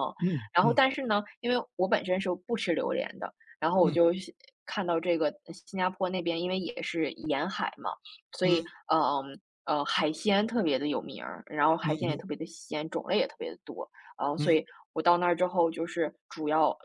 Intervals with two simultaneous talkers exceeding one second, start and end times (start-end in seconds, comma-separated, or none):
none